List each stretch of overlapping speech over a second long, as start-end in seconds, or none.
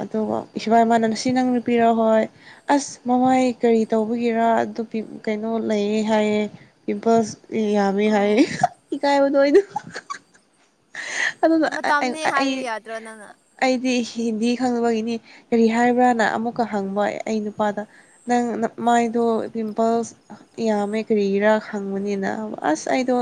none